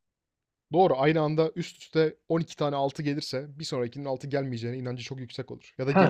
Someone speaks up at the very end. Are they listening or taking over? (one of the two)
taking over